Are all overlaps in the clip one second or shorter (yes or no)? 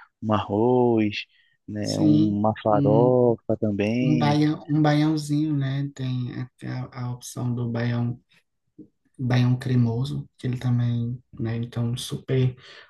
no